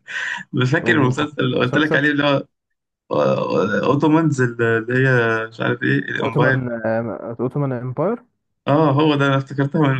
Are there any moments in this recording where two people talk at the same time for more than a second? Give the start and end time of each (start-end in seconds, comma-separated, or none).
0.8-2.0